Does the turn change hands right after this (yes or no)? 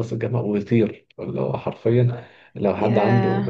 no